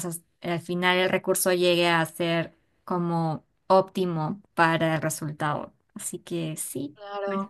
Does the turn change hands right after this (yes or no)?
yes